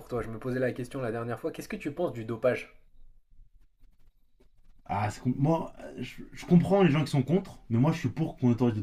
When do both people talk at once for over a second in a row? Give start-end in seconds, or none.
none